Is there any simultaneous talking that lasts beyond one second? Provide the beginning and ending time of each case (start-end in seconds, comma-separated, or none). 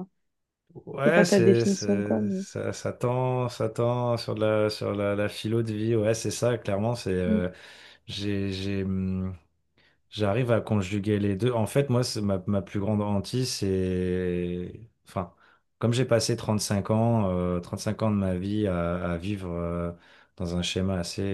1.1-2.5